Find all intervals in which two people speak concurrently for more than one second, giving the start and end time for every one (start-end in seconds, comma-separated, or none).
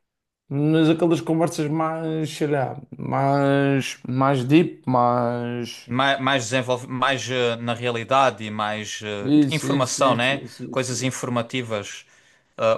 9.2-11.2